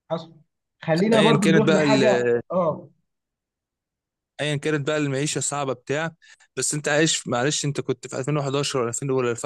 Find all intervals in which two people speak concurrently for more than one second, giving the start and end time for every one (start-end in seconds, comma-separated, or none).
1.1-2.4